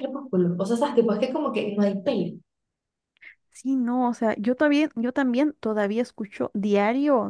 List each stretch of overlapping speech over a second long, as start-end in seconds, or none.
none